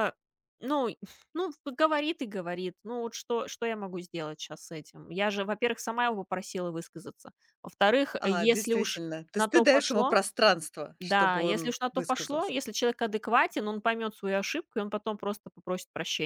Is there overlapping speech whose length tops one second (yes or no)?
yes